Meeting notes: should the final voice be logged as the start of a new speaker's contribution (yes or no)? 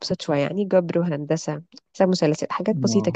yes